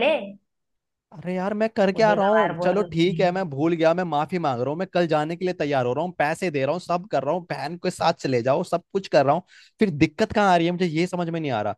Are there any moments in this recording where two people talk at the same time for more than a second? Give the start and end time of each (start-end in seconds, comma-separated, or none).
1.9-3.4